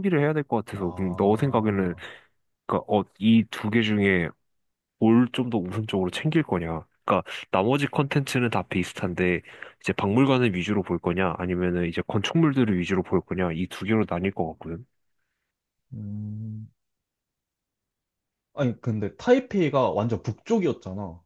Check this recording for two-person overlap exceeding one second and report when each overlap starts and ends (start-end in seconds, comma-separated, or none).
0.7-1.9